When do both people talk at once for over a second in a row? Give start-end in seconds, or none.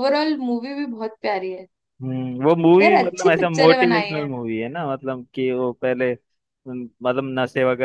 2.8-4.3